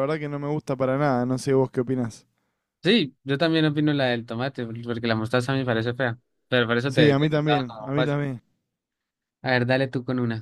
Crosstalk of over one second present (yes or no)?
yes